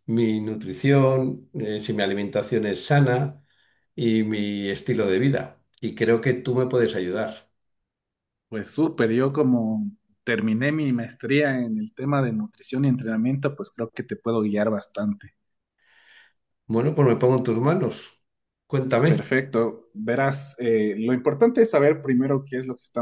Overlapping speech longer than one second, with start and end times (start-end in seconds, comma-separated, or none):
none